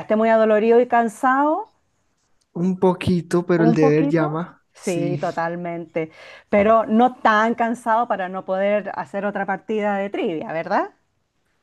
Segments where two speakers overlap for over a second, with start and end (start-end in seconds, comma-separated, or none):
3.6-5.2